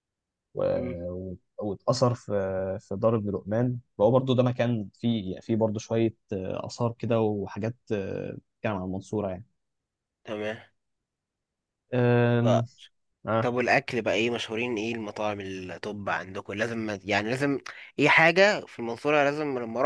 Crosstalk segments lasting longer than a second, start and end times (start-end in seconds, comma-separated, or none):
none